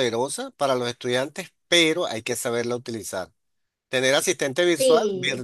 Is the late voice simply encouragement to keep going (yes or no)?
yes